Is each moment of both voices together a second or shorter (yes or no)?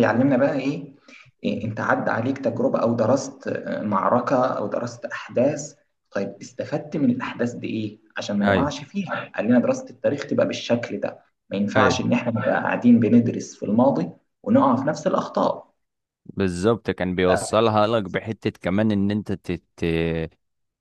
yes